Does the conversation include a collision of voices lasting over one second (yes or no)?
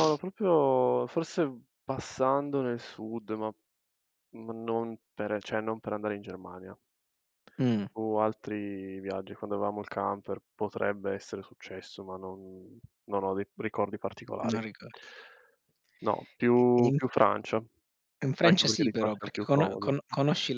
yes